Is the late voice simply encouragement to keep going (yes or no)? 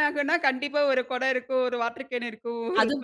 yes